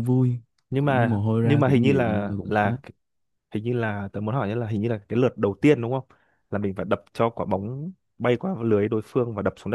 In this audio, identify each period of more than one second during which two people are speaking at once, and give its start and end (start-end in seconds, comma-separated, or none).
0.8-2.8